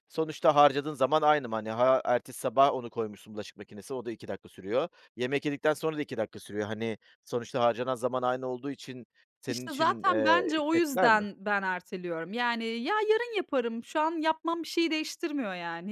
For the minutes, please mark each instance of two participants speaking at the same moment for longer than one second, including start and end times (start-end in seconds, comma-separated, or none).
9.5-11.2